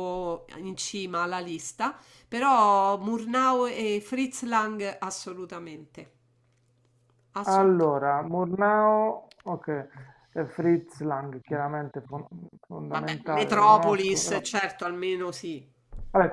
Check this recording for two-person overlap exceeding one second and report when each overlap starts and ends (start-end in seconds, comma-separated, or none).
12.9-14.4